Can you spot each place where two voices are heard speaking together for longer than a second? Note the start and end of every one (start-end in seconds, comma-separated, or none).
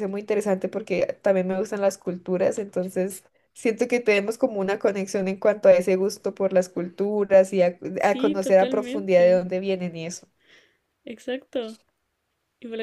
8.0-9.5